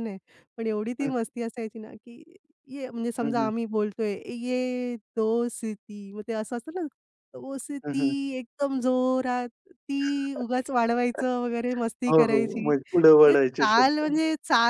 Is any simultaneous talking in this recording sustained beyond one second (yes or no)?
yes